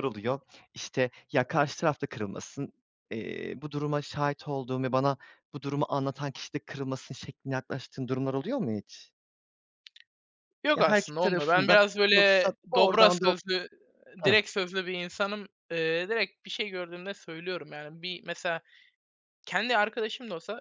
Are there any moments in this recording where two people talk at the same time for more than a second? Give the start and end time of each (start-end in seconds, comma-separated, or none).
10.8-13.3